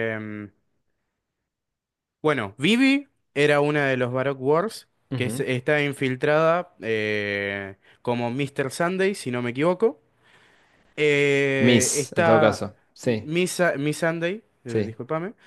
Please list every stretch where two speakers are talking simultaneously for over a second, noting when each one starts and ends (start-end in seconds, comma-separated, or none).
11.6-13.3